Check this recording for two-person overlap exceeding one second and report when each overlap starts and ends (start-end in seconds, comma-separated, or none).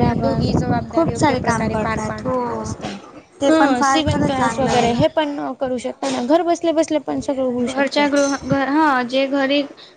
1.2-2.6, 3.5-4.9